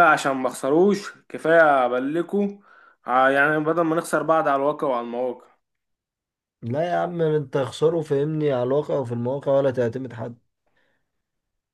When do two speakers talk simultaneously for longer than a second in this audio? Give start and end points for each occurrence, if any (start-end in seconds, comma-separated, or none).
none